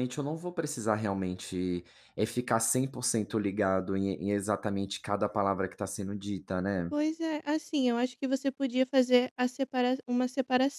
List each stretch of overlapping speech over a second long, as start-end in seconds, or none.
none